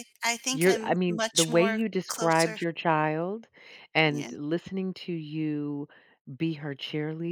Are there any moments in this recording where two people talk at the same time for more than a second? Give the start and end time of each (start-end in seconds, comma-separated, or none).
0.5-2.6